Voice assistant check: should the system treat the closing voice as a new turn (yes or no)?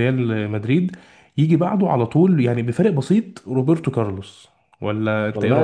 yes